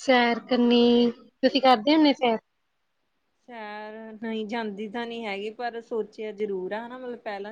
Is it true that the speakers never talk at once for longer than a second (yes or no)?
yes